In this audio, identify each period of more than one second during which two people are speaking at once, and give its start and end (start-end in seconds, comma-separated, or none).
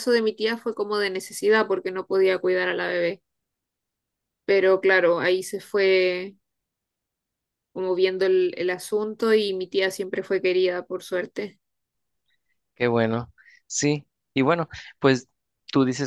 none